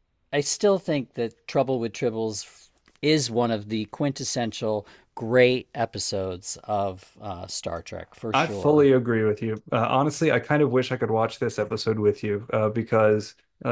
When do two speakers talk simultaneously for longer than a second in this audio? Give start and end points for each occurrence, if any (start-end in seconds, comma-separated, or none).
none